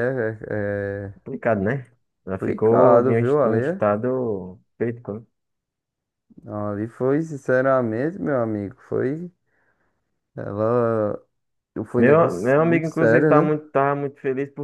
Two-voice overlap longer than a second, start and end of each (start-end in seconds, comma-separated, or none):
2.4-3.8, 12.0-13.6